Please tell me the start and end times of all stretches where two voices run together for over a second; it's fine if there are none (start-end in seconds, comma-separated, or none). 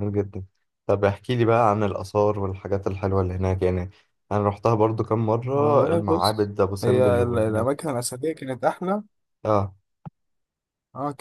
5.5-7.7